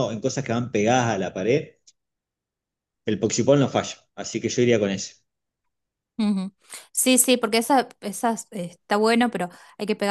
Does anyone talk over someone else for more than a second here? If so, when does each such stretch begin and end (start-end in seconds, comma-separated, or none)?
none